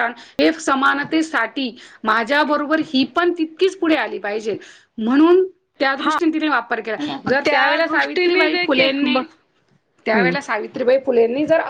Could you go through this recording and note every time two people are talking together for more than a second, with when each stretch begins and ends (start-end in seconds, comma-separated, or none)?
7.5-9.2